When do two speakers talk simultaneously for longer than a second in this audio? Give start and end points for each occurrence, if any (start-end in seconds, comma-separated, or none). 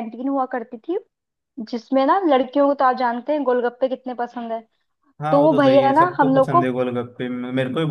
5.3-6.7